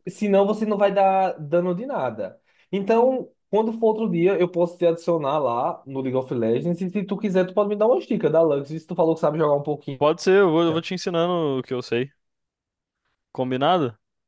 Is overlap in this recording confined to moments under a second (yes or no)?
yes